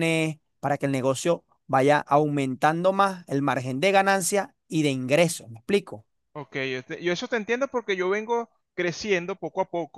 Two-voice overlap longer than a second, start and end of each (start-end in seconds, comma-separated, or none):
none